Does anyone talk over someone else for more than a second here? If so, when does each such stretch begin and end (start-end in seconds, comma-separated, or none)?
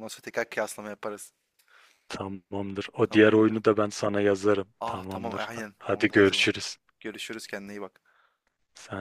4.8-6.5